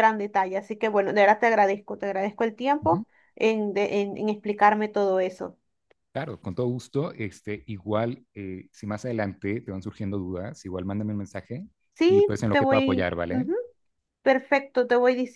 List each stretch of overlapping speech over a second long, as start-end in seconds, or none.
12.1-13.5